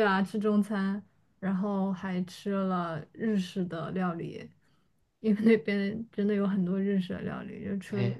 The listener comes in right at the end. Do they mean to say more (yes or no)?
no